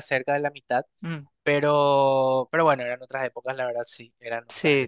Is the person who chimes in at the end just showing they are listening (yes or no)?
yes